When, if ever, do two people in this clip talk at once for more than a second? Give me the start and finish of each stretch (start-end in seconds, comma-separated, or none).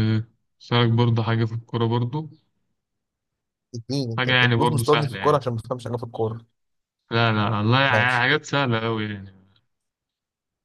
4.2-5.4